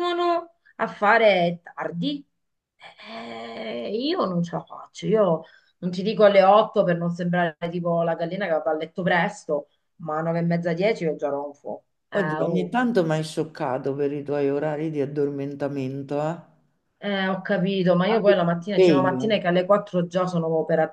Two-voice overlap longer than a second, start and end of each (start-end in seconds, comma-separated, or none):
18.1-19.5